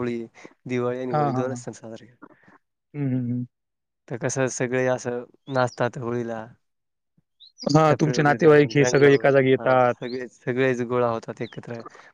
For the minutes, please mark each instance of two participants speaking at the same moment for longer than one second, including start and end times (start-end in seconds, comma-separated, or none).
7.9-9.9